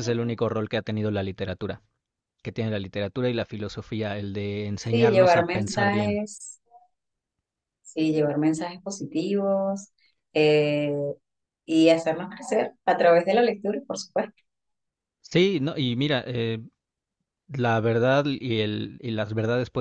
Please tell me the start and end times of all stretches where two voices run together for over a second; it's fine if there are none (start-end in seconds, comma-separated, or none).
4.8-6.2